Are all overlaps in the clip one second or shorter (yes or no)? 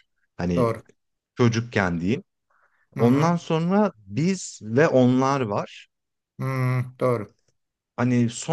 yes